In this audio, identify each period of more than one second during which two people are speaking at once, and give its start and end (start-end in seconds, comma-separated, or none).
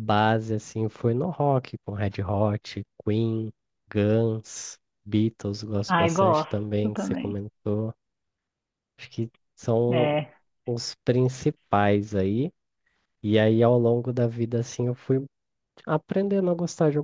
5.8-7.4